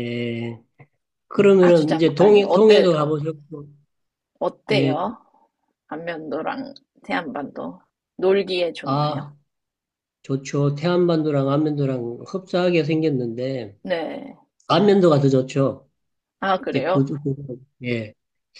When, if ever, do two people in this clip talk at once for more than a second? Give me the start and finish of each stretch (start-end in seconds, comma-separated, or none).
1.6-3.1